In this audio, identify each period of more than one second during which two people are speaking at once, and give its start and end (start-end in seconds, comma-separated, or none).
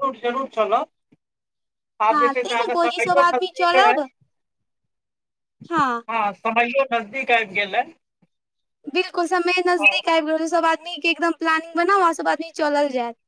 2.1-4.0